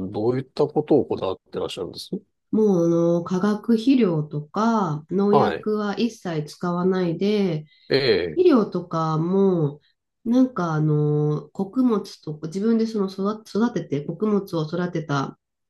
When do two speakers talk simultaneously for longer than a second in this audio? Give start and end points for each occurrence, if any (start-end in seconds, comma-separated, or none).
none